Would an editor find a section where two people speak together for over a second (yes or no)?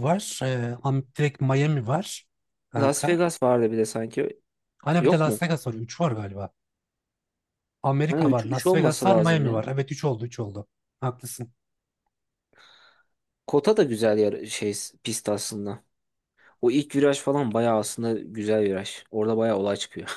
yes